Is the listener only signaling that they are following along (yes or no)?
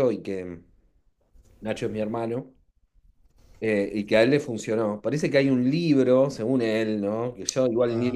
yes